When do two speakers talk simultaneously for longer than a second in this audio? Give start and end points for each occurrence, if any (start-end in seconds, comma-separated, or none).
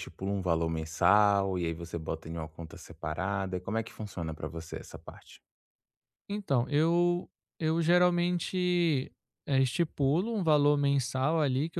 none